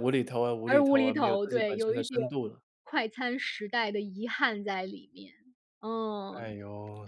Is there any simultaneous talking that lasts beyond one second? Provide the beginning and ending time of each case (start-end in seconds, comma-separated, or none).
0.7-2.2